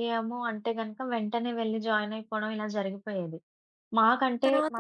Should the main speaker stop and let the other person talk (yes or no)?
no